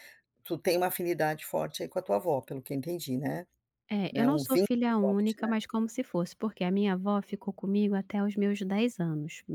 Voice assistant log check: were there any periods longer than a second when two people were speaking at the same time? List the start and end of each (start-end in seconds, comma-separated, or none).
4.1-5.5